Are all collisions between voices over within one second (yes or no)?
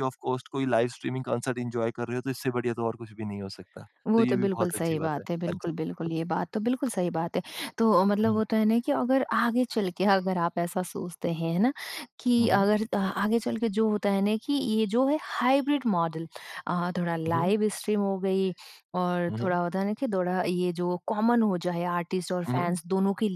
no